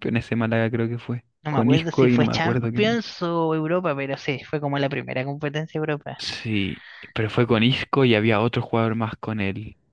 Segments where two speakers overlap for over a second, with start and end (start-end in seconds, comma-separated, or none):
1.4-3.0